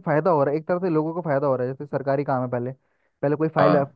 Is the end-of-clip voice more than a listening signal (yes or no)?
no